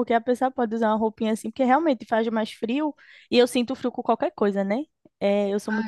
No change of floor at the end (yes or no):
no